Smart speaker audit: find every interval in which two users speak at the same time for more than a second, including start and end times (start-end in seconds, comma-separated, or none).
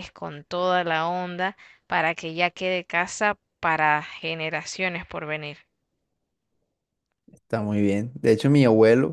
none